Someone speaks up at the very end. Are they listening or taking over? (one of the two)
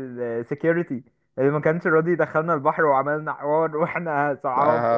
taking over